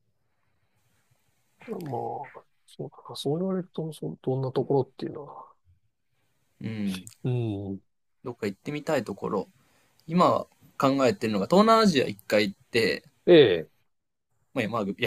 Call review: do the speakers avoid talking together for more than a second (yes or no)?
yes